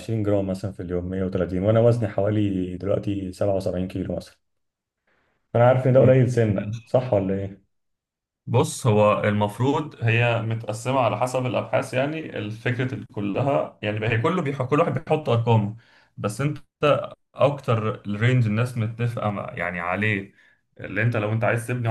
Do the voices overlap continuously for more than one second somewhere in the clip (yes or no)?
no